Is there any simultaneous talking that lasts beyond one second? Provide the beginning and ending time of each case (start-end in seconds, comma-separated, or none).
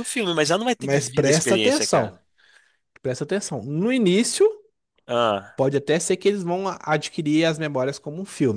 0.8-2.1